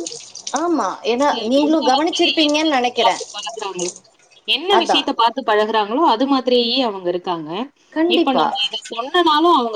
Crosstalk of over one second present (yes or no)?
yes